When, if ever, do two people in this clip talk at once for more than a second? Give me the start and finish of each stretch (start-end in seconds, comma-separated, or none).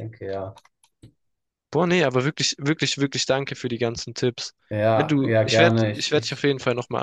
4.9-6.5